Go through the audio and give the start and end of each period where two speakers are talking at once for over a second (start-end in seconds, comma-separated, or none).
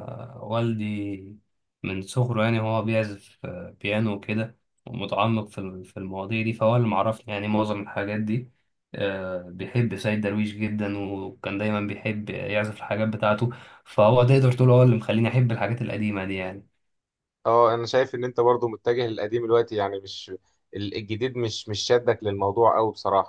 none